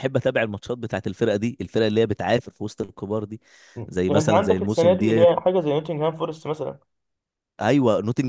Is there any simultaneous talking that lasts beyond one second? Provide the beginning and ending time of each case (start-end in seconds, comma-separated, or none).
4.1-5.3